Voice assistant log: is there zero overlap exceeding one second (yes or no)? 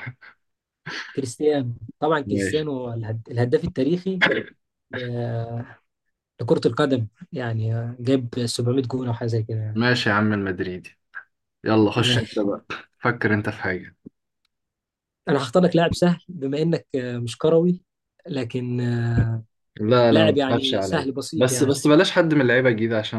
no